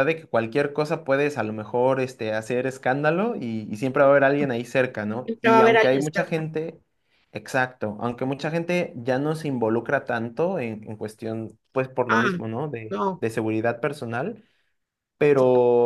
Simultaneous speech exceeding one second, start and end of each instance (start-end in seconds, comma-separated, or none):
5.2-6.4